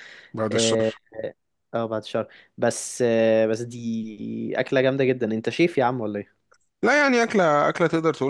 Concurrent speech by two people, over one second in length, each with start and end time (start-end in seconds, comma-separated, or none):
none